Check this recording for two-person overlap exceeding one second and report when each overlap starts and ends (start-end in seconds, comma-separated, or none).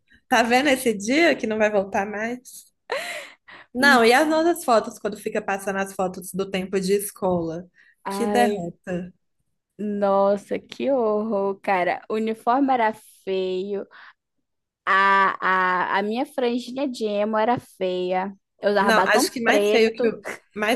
18.8-20.1